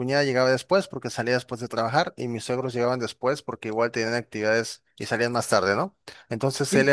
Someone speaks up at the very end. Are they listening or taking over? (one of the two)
listening